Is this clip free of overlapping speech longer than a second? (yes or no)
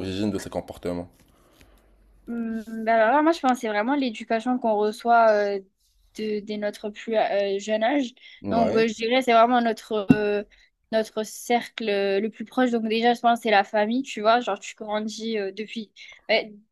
yes